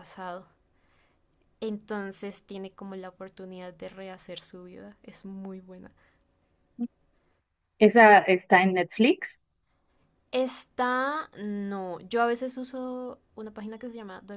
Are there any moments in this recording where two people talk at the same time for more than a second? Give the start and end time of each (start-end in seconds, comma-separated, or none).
none